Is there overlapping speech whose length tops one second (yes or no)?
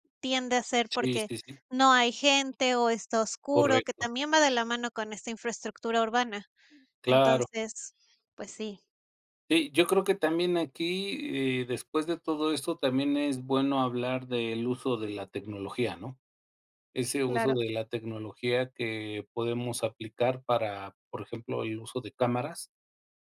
no